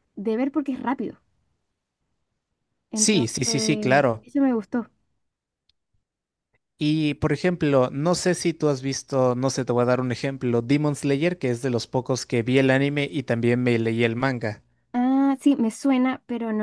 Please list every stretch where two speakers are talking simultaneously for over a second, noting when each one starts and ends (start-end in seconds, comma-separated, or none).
2.9-4.2